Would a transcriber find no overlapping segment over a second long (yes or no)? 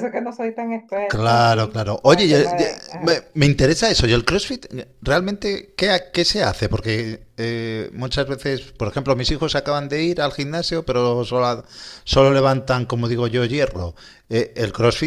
no